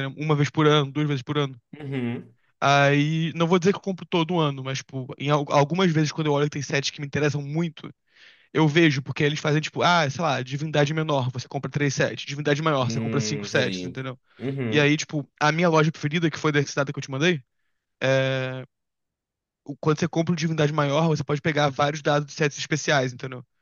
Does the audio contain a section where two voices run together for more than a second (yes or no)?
yes